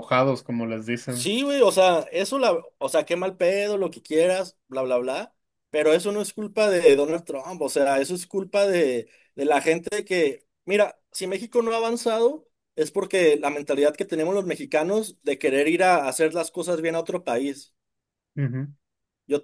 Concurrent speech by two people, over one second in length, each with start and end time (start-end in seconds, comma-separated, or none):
none